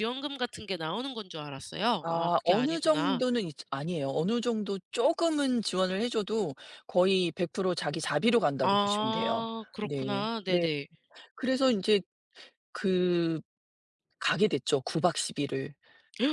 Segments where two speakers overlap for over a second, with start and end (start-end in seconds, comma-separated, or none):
2.0-3.2, 8.6-10.7